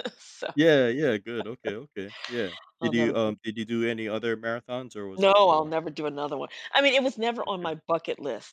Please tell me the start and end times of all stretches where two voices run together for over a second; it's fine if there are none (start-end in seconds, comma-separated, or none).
none